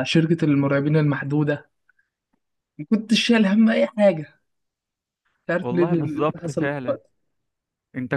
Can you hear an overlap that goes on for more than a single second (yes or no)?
yes